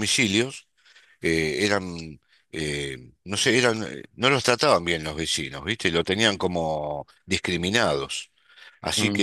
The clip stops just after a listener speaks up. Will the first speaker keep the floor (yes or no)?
yes